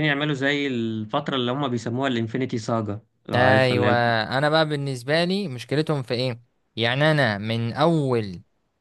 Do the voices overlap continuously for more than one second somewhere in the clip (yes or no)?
no